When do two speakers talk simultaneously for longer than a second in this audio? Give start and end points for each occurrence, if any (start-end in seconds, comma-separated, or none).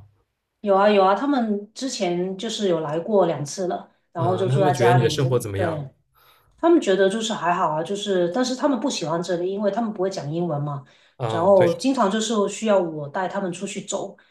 4.2-5.8